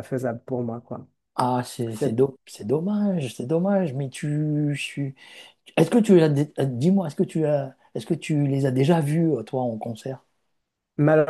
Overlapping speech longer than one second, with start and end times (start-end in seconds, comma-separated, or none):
none